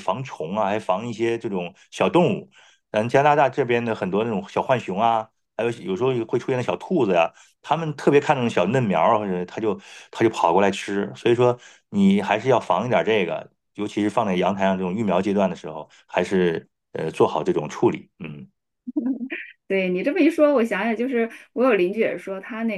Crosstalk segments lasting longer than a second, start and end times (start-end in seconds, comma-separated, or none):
none